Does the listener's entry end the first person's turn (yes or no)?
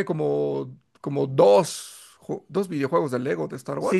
yes